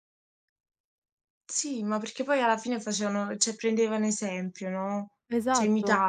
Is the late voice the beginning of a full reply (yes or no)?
yes